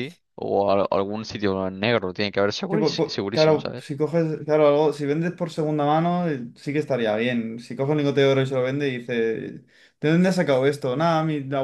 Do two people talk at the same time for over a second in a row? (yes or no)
yes